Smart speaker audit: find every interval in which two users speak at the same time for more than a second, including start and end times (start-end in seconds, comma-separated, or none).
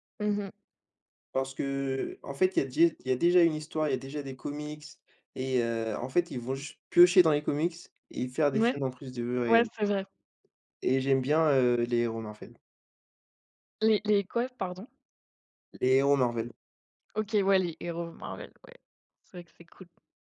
none